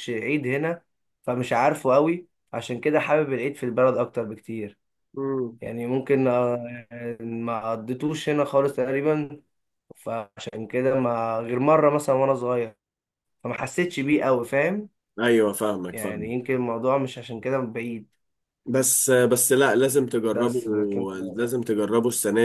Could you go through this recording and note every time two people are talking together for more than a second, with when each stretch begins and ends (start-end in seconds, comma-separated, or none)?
none